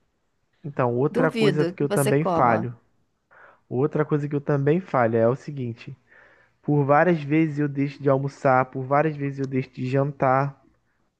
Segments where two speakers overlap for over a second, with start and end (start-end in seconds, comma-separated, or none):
1.1-2.7